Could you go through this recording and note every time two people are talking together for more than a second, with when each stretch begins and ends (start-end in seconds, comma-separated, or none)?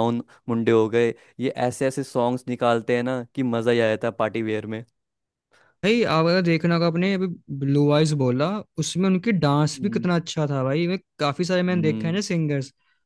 none